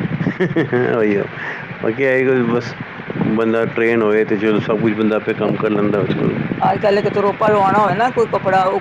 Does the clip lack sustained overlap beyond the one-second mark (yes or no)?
yes